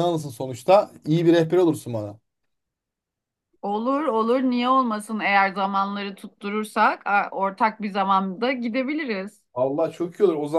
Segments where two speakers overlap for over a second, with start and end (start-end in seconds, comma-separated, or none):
none